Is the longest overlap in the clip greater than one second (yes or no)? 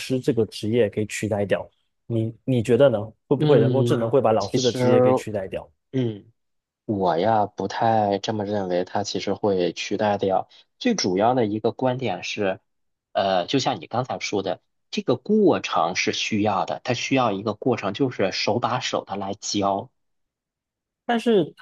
yes